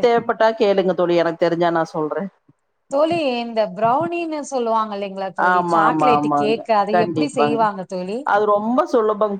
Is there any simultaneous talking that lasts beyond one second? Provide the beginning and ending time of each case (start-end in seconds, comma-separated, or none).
5.5-7.6